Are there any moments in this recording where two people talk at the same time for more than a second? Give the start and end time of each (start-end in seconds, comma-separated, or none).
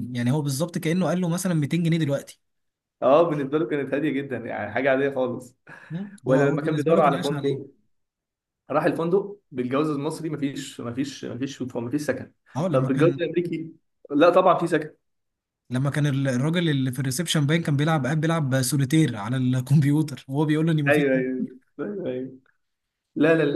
6.2-7.6